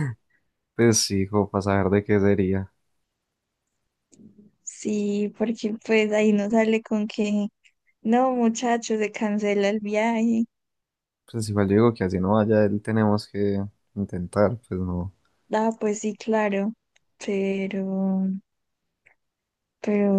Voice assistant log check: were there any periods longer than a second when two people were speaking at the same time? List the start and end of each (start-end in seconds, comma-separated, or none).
none